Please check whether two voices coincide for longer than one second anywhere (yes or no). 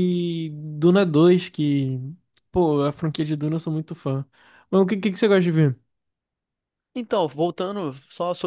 no